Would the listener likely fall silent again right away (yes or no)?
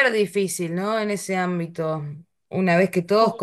yes